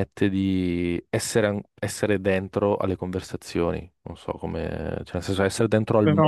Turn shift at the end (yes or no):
no